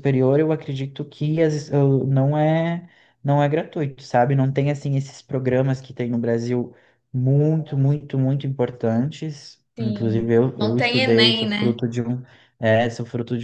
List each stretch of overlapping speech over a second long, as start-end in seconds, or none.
9.8-11.8